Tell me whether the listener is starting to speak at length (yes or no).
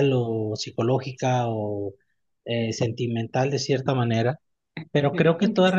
no